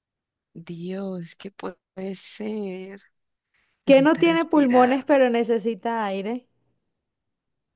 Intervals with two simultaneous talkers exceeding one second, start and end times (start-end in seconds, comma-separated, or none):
3.8-5.1